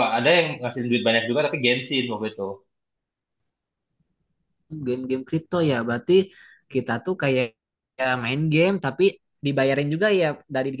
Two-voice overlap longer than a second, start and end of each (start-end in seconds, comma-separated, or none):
none